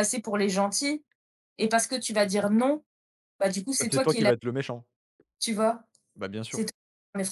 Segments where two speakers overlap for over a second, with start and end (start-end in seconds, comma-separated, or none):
none